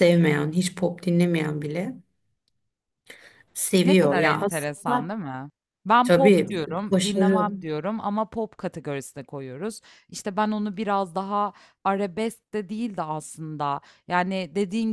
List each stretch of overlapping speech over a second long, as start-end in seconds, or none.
3.8-5.1, 6.0-7.5